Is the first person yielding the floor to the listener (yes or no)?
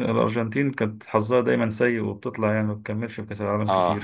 yes